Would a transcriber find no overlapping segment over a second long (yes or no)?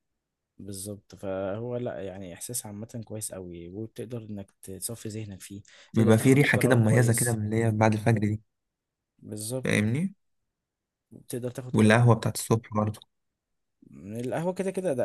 no